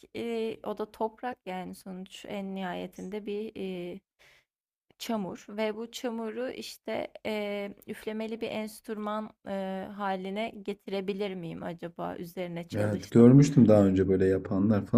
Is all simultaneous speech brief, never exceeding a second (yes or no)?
yes